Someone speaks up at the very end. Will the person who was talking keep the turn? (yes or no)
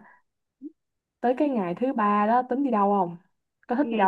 no